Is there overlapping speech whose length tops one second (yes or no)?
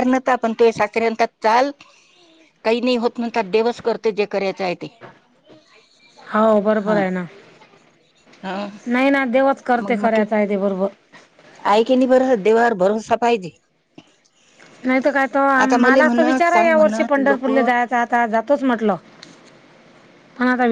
yes